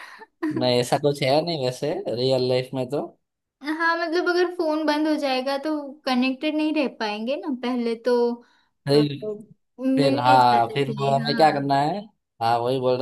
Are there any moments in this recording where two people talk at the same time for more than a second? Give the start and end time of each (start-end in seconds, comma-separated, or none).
10.0-11.7